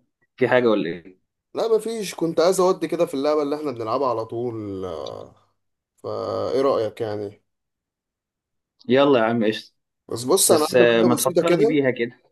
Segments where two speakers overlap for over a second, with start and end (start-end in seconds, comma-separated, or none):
10.5-11.8